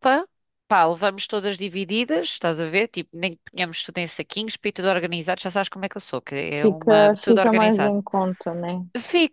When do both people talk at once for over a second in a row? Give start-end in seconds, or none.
6.6-8.0